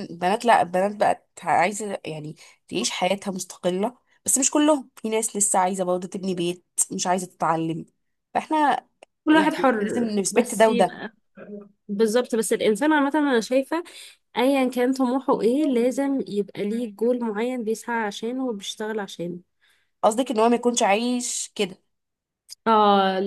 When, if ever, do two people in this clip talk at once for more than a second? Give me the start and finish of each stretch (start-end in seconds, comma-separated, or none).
9.3-11.0